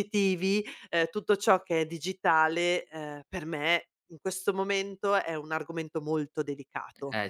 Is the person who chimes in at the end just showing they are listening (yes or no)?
no